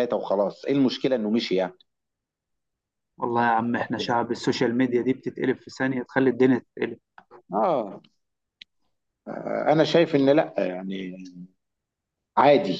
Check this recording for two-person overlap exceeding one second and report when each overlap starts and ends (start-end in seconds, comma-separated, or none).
none